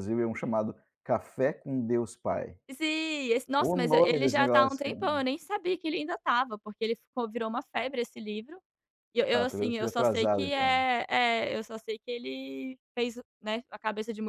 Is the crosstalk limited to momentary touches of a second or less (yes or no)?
no